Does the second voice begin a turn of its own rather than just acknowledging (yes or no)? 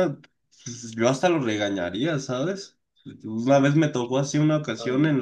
no